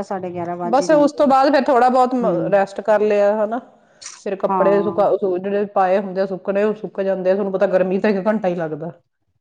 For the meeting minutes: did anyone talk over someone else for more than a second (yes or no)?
no